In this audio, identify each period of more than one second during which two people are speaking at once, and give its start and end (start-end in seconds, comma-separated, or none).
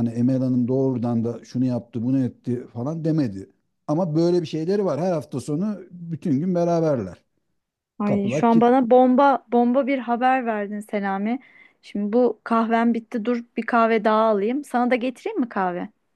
none